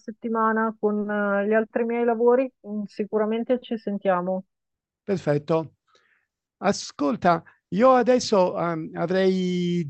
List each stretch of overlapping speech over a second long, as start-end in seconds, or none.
none